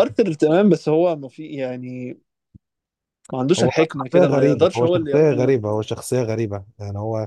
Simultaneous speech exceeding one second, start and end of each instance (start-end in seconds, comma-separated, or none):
3.6-5.6